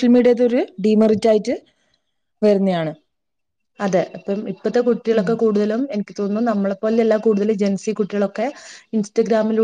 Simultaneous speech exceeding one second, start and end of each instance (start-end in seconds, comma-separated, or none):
none